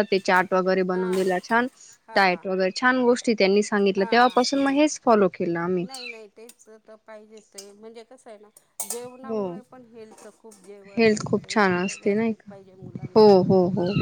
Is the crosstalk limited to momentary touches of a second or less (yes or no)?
no